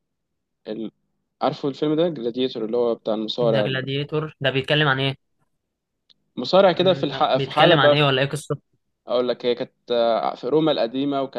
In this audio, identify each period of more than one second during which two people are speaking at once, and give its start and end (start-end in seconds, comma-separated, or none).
6.8-8.0